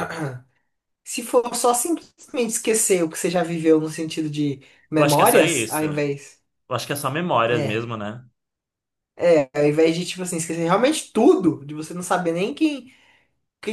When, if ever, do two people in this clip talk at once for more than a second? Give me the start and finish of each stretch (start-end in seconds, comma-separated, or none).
5.0-6.3